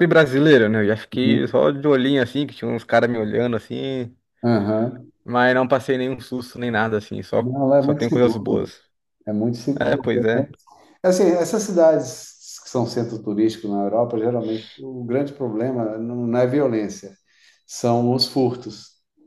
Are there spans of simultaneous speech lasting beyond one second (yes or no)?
yes